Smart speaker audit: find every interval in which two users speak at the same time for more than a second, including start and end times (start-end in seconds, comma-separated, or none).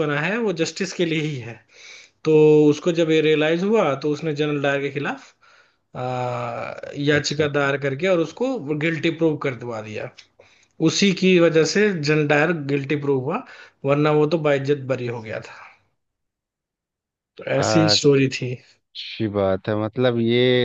none